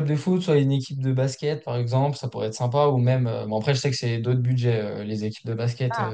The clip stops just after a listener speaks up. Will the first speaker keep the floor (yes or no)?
yes